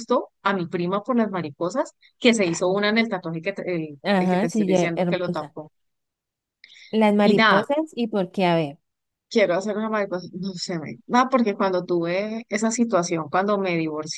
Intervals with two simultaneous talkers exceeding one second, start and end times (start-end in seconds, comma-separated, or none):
4.0-5.5